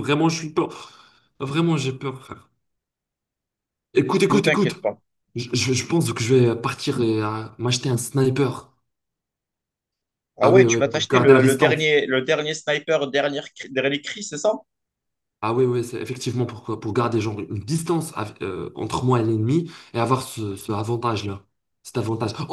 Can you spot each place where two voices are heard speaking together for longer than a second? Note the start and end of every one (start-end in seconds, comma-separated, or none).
10.4-11.9